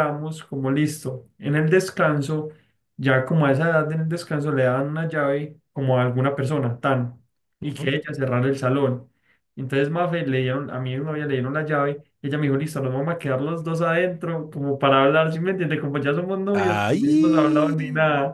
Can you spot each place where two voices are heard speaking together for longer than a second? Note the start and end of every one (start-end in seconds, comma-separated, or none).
16.5-17.7